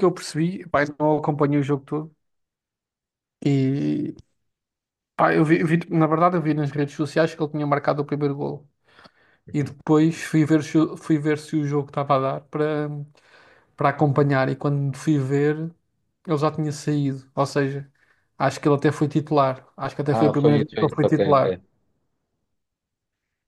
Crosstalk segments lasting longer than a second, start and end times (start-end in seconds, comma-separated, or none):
20.1-21.6